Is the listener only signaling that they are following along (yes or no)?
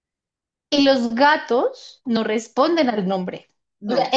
yes